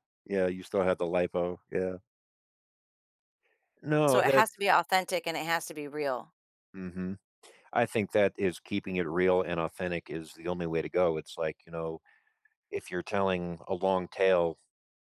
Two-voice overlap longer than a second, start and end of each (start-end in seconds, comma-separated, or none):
none